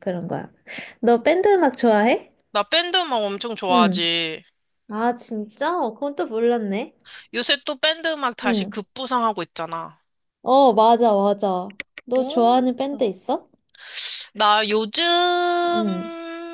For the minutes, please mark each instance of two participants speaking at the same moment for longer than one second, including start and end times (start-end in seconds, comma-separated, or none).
none